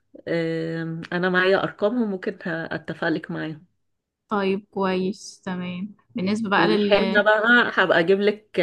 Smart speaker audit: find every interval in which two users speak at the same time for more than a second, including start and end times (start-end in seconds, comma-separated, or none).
none